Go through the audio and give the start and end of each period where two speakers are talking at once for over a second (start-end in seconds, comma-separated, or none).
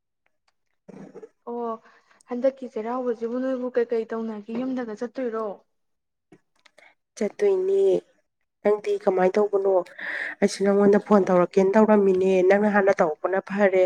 none